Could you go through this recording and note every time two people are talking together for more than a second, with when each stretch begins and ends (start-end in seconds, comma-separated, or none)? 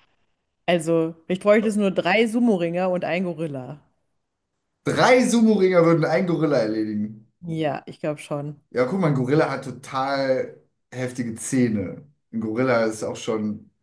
none